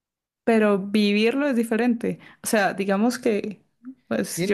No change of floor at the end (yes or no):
no